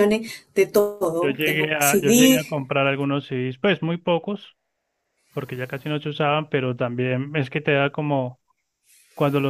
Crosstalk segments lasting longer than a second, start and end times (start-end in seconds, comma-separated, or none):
1.2-2.4